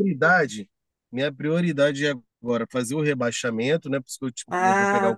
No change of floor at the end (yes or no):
no